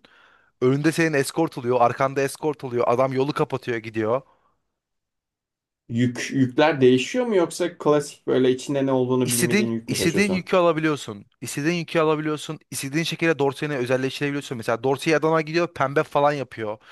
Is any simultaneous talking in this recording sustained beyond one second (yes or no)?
yes